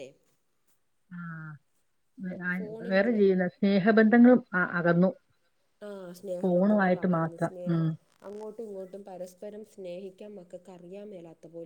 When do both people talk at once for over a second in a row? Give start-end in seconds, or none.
6.4-7.8